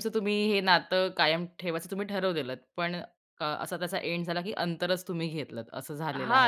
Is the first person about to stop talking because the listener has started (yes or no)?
yes